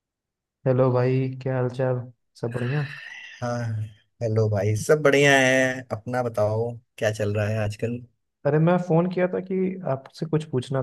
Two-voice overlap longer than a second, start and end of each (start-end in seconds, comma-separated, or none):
none